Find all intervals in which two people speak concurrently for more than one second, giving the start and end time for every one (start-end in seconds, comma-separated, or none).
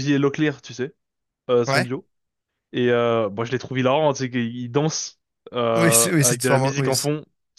5.8-7.1